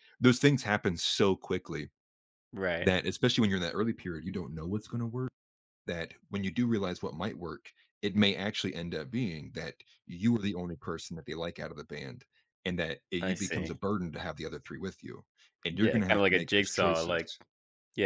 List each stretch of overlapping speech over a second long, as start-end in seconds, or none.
15.8-17.3